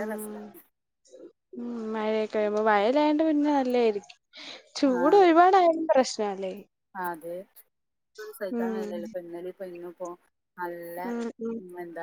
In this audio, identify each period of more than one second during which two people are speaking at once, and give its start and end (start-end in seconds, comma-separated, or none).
none